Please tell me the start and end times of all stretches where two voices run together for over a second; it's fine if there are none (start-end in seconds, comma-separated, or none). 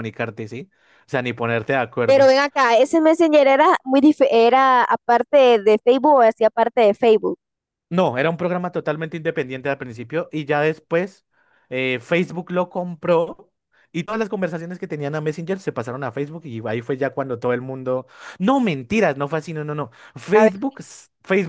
none